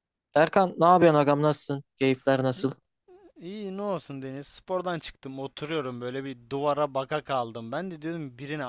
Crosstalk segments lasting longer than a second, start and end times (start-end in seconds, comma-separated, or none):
none